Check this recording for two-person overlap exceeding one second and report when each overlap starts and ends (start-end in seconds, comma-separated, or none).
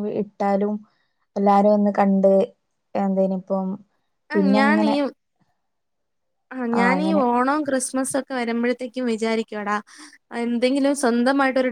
none